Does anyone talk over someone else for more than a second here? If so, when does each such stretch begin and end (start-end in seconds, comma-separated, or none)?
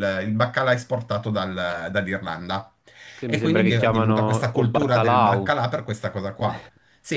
3.2-5.5